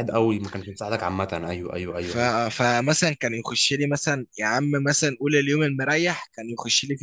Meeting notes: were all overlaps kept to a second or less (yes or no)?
yes